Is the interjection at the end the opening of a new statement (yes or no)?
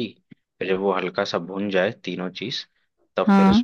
no